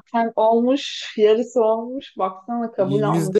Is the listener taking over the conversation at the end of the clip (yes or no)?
yes